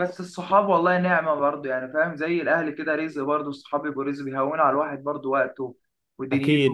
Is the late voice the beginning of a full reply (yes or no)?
yes